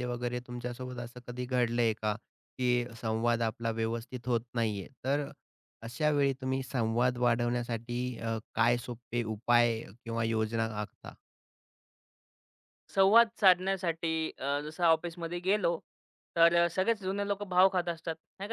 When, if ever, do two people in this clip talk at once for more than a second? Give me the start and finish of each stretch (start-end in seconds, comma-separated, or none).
none